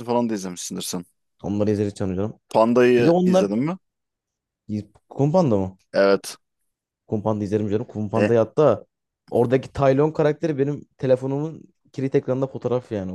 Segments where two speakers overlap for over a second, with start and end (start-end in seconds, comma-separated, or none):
none